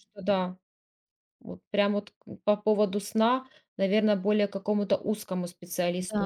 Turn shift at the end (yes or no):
yes